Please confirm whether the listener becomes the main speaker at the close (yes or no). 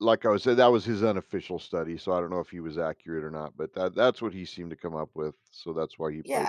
yes